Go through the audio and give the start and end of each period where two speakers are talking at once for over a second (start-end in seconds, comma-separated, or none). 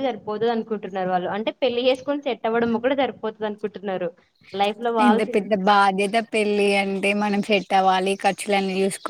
none